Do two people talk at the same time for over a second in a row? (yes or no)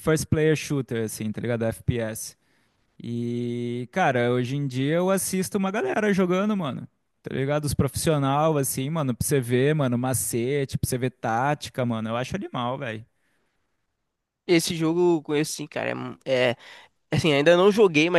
no